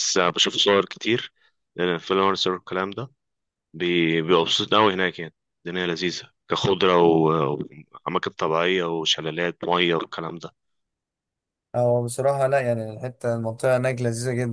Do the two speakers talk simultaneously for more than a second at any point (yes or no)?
no